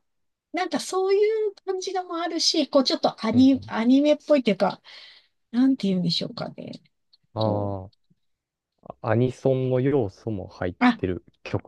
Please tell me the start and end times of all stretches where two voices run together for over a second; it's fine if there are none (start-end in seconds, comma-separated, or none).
none